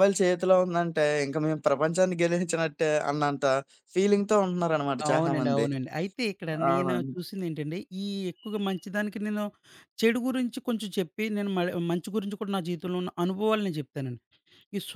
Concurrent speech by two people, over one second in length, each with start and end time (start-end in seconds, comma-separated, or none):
none